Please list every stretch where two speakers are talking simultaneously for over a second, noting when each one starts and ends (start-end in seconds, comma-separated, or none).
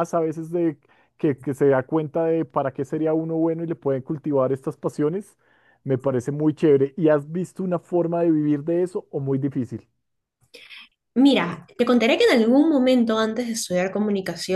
none